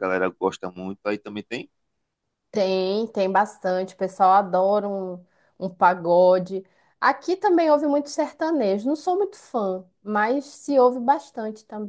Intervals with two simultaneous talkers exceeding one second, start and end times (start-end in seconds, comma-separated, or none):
none